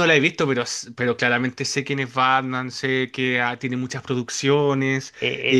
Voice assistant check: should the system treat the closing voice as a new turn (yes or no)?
yes